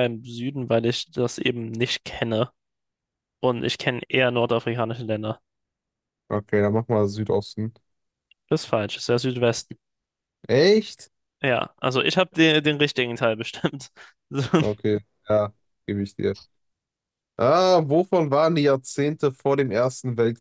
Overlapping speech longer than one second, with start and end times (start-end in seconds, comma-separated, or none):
none